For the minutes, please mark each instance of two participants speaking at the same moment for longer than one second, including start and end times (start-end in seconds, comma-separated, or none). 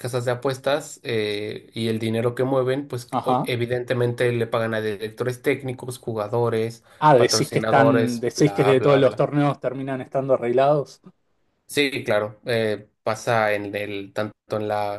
7.0-9.2